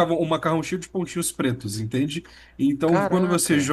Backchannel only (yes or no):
yes